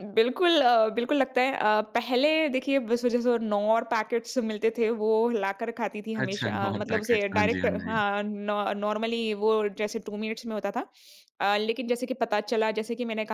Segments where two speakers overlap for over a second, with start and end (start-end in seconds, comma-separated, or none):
6.2-8.0